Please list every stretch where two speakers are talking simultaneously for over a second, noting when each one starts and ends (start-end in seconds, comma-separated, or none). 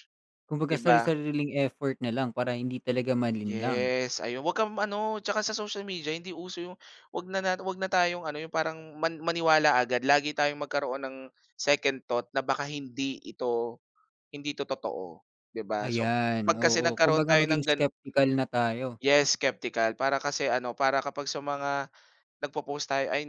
15.9-17.8